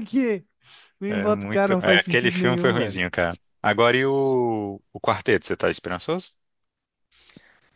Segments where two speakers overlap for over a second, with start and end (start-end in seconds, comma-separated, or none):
1.1-3.0